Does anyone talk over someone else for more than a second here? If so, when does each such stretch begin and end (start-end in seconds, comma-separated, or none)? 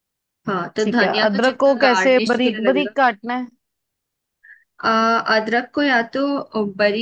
0.8-3.0